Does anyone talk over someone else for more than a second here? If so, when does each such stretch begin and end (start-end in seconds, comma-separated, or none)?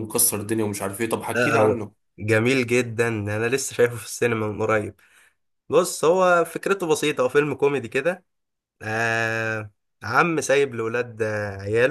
none